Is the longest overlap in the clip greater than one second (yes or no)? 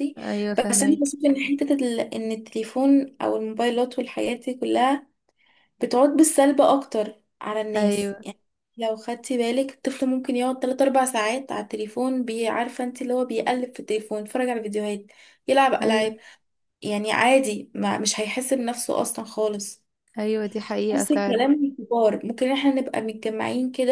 no